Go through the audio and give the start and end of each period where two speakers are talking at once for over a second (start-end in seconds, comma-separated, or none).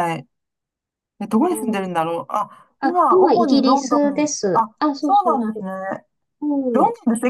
2.8-5.7